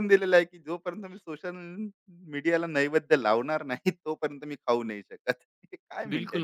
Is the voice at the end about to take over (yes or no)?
yes